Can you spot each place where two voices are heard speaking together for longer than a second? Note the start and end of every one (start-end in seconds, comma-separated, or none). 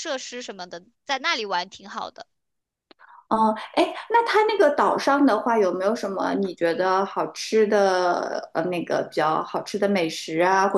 none